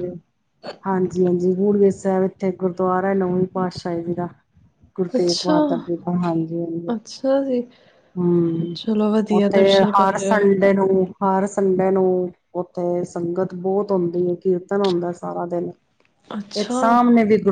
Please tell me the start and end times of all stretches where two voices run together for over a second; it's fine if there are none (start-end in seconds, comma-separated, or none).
9.3-10.7